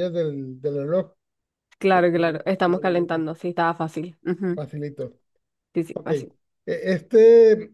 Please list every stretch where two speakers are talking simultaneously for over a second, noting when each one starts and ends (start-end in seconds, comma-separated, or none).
1.9-3.2